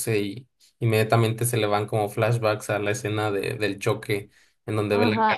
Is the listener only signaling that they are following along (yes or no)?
no